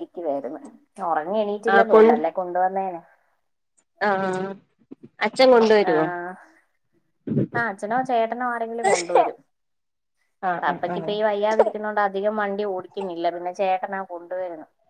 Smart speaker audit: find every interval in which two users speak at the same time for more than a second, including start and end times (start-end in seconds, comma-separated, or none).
none